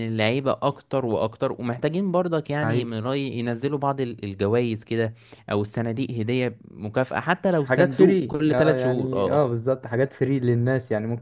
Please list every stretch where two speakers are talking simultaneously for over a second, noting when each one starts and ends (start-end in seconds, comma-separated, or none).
7.6-9.4